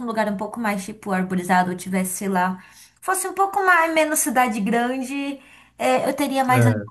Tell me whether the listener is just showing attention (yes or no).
yes